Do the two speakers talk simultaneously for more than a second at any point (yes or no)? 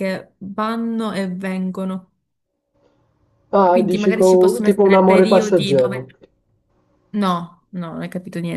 yes